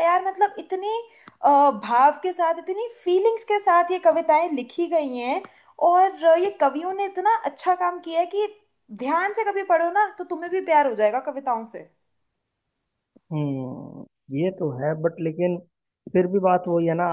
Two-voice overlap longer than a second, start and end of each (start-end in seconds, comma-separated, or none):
none